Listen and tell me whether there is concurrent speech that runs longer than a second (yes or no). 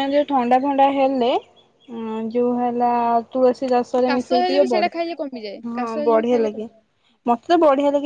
yes